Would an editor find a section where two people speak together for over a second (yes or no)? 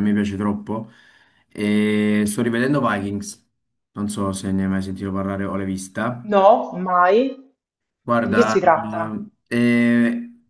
no